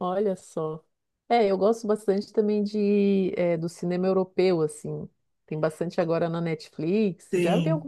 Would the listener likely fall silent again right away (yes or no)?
no